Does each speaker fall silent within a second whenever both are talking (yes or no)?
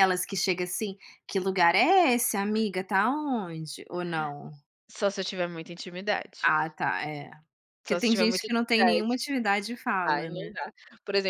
no